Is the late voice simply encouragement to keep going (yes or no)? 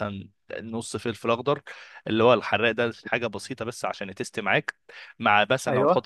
yes